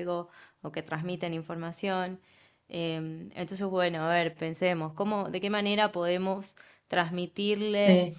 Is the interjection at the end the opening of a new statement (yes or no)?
no